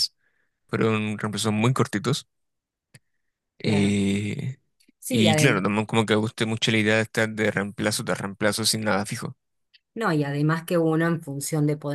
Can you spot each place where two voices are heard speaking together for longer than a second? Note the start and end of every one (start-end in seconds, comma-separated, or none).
none